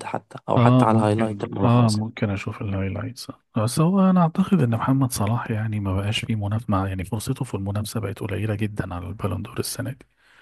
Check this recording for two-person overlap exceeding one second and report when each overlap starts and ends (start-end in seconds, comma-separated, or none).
0.6-2.0